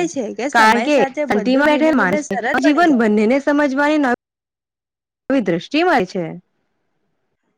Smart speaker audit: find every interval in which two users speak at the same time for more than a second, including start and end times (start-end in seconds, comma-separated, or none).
0.5-3.0